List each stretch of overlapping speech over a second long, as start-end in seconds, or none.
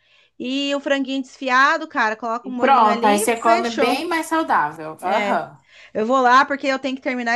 2.4-4.0